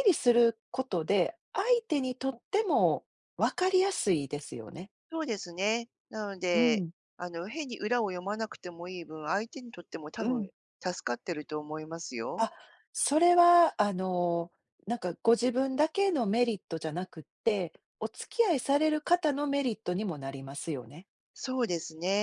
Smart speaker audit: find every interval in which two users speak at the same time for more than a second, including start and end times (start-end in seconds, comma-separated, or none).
none